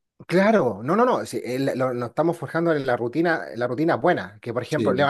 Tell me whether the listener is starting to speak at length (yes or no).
no